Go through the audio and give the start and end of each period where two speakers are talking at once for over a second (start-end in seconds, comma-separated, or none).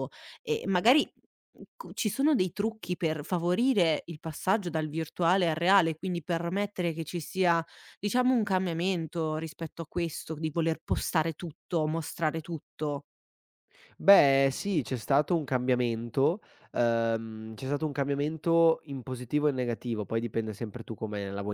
none